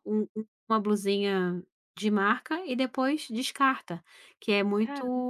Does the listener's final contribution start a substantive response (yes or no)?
no